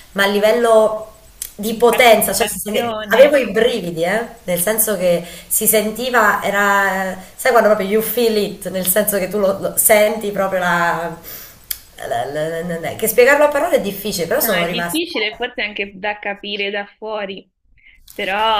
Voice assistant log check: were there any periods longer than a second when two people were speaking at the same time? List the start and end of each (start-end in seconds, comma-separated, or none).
1.7-3.3